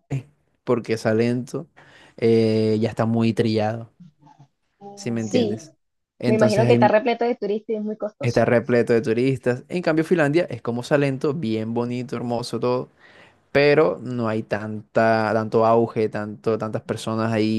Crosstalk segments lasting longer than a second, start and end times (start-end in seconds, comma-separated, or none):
none